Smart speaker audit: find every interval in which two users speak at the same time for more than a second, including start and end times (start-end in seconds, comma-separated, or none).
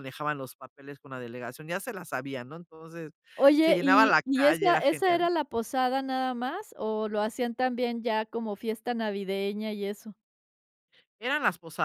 3.6-5.3